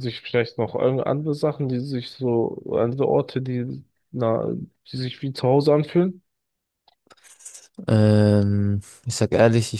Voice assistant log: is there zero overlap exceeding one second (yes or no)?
yes